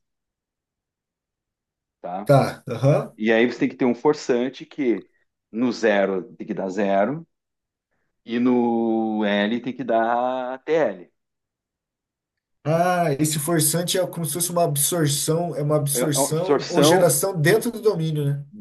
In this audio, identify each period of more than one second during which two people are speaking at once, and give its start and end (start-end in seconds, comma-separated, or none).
15.9-17.2